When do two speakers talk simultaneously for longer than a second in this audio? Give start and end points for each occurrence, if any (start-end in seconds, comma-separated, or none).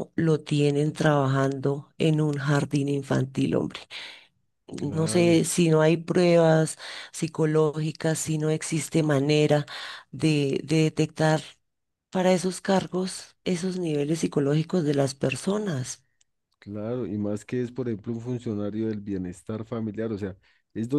none